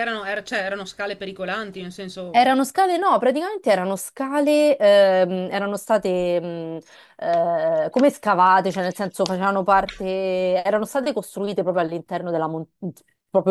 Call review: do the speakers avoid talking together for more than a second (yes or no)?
yes